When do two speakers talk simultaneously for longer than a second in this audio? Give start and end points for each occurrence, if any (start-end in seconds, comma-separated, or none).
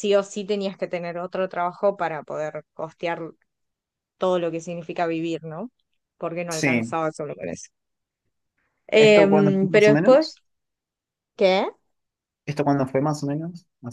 8.9-10.3